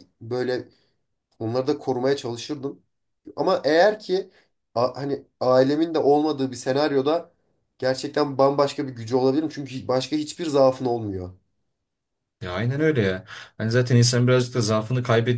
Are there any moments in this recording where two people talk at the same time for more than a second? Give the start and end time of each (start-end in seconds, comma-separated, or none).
none